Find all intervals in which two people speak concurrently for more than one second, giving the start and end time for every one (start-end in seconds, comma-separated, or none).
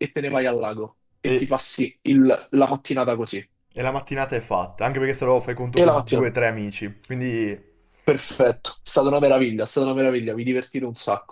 none